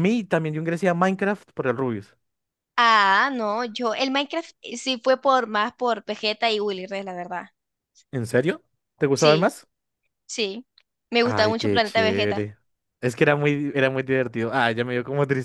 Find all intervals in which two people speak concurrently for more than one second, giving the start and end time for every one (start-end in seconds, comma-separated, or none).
11.2-12.5